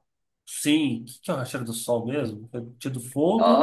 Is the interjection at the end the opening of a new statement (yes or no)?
yes